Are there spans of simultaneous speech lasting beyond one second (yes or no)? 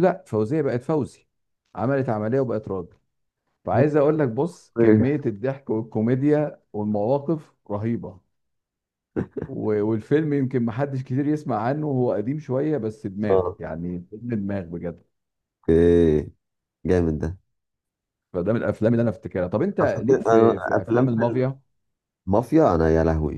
yes